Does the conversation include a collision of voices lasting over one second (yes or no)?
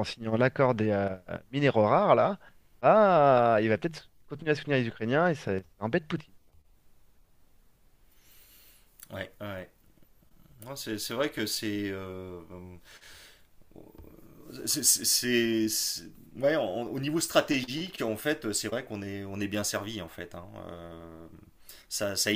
no